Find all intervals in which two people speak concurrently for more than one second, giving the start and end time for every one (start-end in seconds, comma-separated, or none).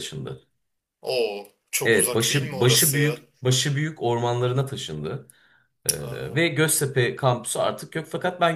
1.9-3.1